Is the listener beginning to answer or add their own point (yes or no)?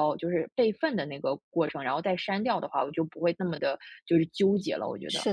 yes